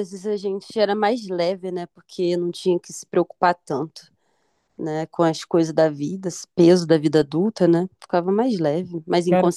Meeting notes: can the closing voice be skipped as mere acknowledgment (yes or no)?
no